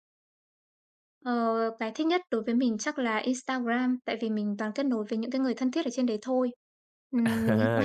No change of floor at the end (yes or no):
no